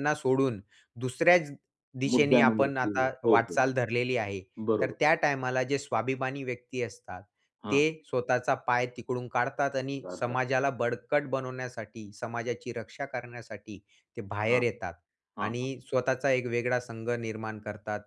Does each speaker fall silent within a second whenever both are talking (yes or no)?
no